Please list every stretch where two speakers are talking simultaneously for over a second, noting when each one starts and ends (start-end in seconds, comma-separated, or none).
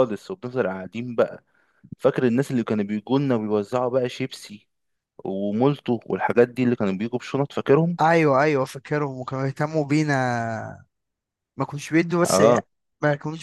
none